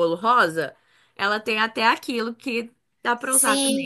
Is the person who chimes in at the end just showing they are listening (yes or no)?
no